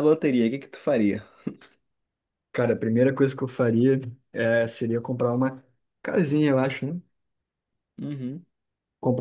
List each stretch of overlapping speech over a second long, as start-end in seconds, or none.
none